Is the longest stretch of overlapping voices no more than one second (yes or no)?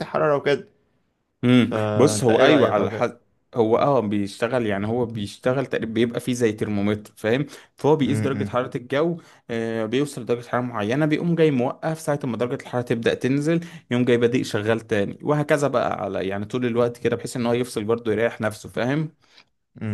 no